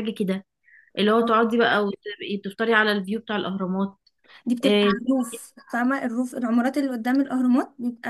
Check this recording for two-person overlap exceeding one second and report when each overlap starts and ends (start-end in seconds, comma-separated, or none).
none